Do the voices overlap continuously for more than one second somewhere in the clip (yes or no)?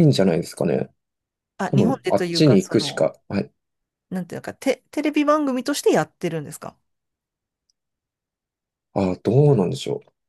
yes